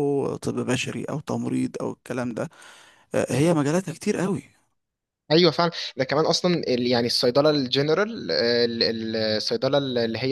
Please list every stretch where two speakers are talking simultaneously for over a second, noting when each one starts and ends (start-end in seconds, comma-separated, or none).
none